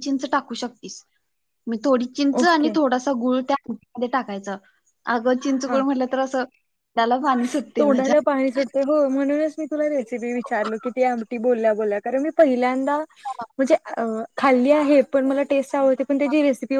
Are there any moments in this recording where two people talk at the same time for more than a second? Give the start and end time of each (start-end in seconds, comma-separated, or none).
none